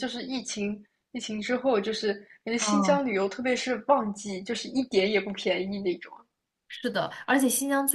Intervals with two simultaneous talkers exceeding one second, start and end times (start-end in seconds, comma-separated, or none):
none